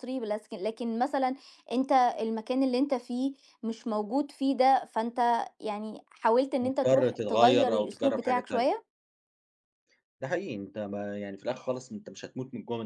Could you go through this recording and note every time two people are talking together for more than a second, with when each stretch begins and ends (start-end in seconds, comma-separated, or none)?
6.6-8.7